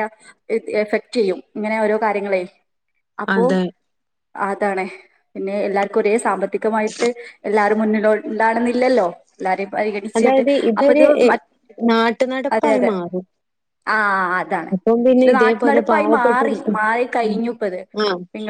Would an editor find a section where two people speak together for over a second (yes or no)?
yes